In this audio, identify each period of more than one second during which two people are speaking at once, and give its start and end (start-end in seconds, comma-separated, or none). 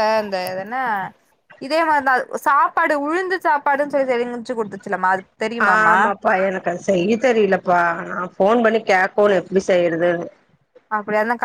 none